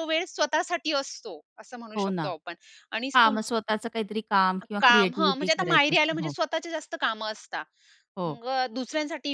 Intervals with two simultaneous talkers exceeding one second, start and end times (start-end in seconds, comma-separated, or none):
4.8-6.3